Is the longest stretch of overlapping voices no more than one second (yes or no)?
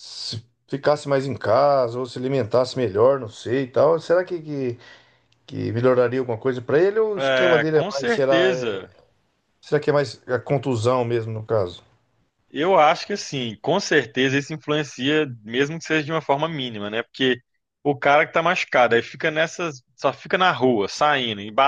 no